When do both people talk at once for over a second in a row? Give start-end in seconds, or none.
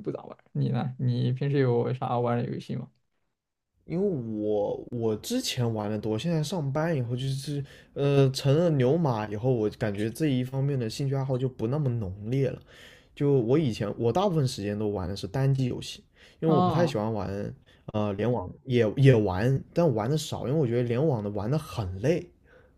none